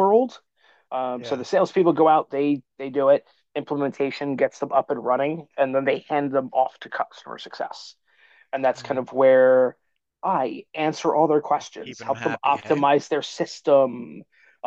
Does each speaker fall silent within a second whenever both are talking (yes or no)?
no